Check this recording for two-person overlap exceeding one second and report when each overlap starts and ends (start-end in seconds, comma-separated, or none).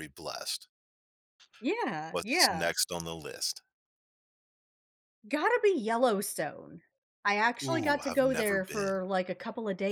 7.6-9.0